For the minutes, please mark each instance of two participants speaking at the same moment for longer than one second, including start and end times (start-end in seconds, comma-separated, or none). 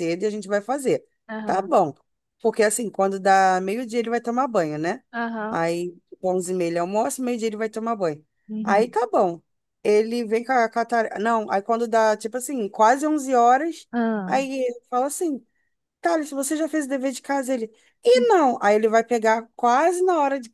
none